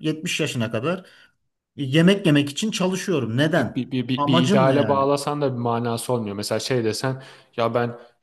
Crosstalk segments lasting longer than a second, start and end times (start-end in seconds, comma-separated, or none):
3.6-5.1